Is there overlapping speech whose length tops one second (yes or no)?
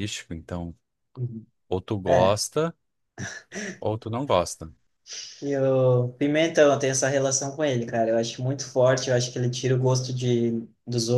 no